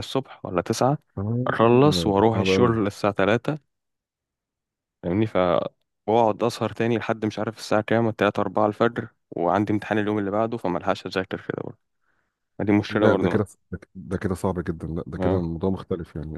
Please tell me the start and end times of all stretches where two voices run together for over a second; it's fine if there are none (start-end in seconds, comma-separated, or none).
1.5-2.7